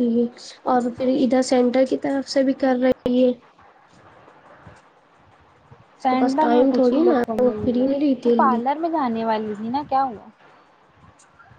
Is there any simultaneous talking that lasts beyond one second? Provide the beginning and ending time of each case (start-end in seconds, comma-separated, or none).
6.1-8.6